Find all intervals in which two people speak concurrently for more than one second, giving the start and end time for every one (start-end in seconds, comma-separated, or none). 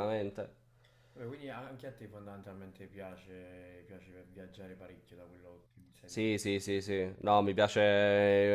none